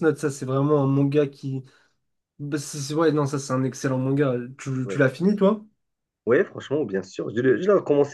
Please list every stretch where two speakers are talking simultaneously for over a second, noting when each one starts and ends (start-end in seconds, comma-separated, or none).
none